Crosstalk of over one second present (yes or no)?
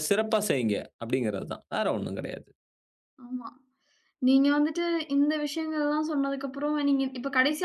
no